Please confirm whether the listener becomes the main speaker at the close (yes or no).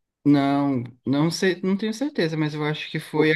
no